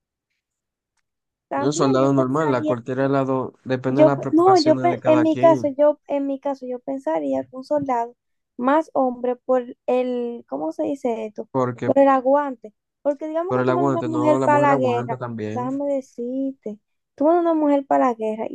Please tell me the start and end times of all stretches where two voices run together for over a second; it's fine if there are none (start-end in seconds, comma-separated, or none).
1.5-2.7, 3.9-5.8, 13.4-15.7